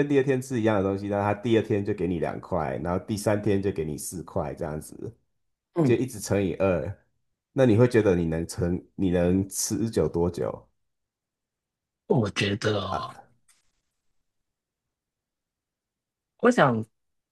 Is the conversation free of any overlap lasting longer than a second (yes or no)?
yes